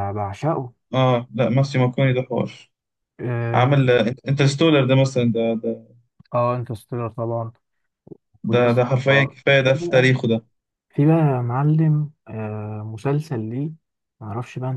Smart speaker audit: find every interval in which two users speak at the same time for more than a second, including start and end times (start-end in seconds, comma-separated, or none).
8.5-10.2